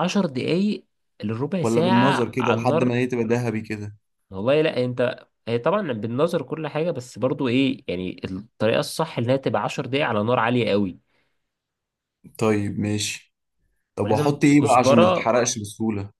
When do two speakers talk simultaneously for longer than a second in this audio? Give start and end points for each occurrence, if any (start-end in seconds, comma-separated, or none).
1.6-3.0, 14.0-15.3